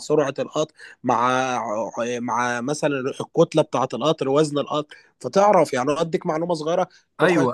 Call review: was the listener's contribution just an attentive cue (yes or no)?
no